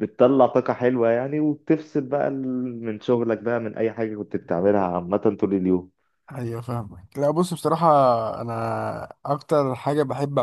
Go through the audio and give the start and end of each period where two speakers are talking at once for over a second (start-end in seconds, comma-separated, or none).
none